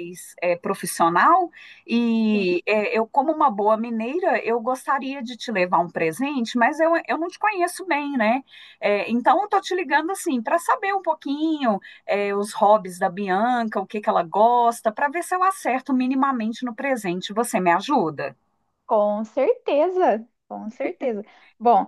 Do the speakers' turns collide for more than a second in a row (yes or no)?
no